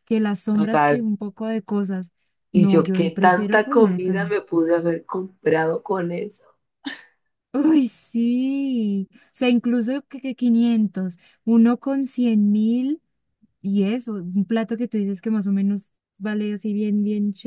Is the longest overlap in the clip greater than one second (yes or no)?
yes